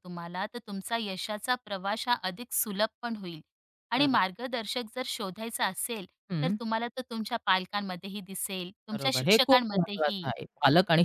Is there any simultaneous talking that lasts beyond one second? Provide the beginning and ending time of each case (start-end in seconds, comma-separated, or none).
8.9-10.3